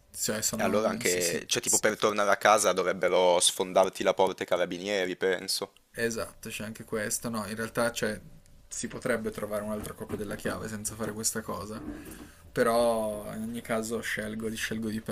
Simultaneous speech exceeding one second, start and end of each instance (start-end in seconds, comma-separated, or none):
0.5-1.8